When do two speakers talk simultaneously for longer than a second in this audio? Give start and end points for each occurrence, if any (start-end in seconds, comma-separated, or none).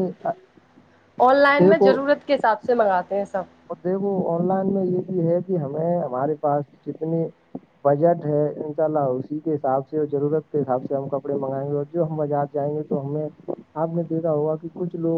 none